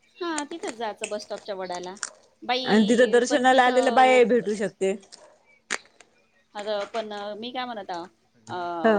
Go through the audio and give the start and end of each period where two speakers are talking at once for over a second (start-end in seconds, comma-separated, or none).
2.6-4.2